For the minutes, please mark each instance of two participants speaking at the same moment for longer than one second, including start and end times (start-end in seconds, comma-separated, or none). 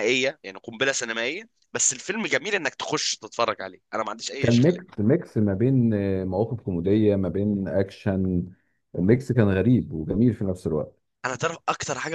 none